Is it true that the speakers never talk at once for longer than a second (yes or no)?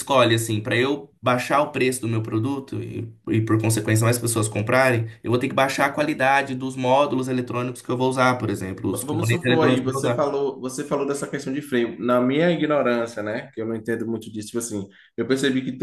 no